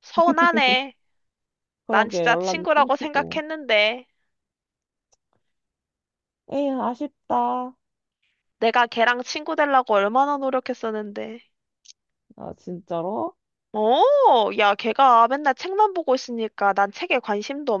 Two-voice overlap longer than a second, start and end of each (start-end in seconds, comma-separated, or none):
1.9-3.4